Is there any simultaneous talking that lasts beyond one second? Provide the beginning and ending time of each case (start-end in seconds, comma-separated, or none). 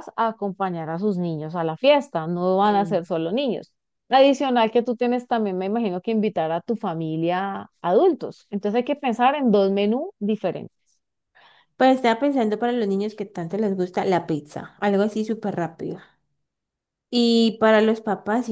none